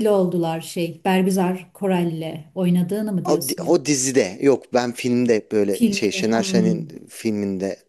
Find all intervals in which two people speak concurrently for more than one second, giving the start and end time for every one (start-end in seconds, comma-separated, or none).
5.7-6.9